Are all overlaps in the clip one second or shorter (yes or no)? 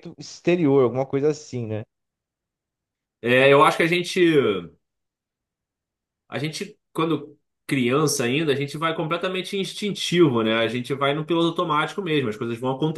yes